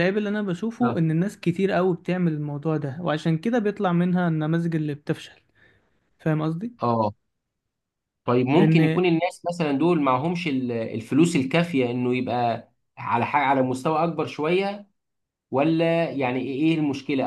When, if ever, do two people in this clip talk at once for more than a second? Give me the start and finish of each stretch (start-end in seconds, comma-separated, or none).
none